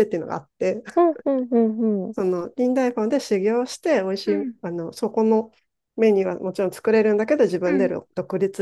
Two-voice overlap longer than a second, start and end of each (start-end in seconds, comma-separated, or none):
none